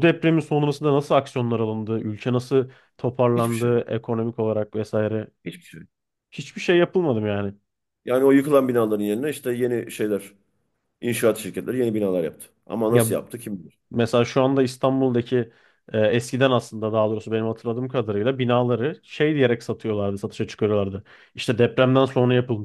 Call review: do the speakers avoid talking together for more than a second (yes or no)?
yes